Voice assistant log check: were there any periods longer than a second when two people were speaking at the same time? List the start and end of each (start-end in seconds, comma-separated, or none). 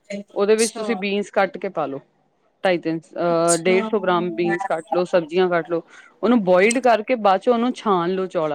3.6-5.0